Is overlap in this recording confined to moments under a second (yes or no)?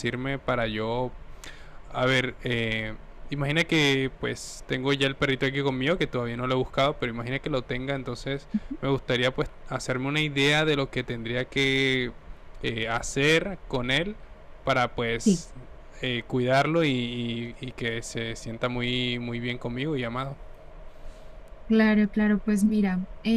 yes